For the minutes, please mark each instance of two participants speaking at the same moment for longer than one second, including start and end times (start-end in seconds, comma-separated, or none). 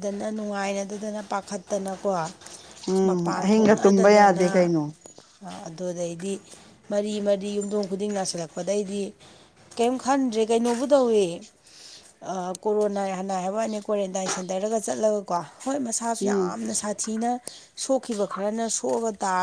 3.0-4.5